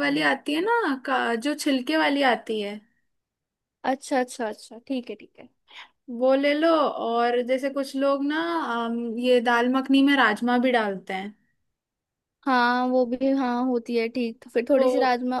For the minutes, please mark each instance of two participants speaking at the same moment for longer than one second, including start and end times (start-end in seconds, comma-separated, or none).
none